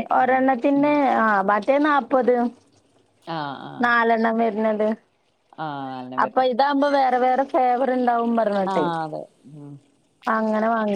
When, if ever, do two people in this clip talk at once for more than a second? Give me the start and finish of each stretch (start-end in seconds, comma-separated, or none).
none